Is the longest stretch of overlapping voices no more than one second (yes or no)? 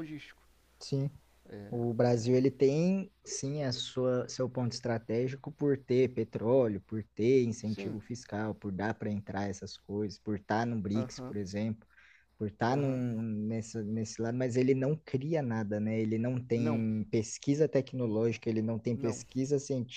yes